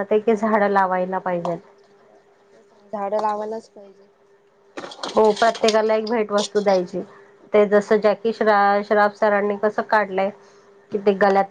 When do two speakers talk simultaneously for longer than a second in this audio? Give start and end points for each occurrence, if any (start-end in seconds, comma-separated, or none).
none